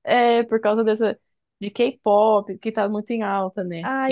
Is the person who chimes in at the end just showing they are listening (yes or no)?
no